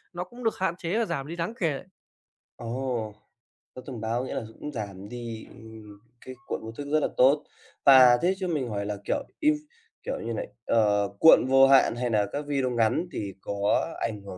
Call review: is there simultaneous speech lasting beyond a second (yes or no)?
no